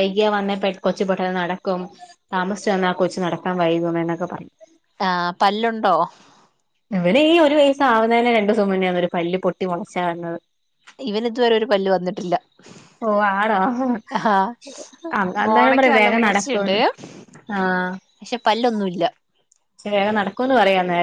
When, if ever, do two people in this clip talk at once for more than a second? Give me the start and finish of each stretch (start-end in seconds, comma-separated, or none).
15.5-16.8